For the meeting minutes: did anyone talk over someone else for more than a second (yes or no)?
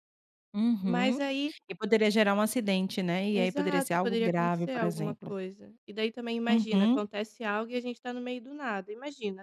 yes